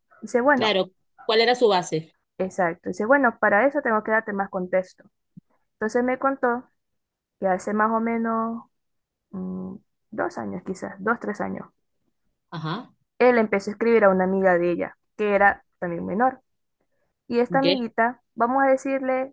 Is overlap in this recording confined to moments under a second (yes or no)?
yes